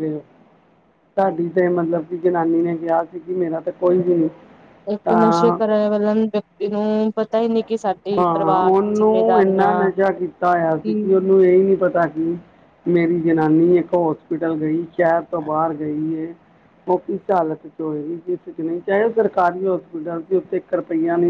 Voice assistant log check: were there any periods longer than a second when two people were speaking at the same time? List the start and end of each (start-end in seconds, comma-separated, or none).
none